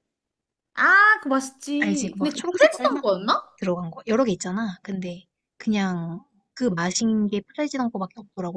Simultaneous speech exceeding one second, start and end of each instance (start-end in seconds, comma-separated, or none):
1.8-3.0